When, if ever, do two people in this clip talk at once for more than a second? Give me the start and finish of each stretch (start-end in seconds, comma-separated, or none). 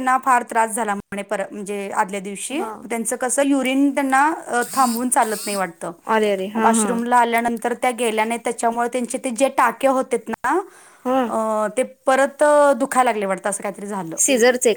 none